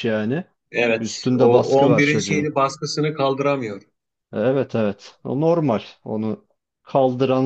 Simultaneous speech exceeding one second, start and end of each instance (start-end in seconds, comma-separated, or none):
1.0-2.5